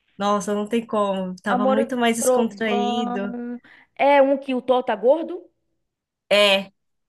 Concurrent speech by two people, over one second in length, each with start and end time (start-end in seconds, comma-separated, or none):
1.5-3.3